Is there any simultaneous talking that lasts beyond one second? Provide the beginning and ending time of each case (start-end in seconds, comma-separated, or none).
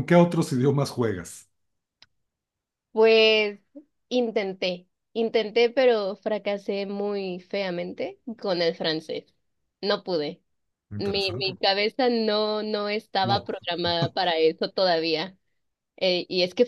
none